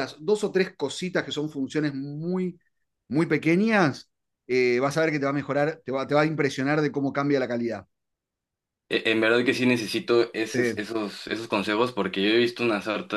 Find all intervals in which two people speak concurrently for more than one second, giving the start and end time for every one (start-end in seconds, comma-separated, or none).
none